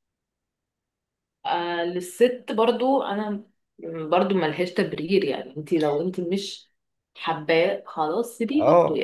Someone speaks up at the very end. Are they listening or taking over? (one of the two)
taking over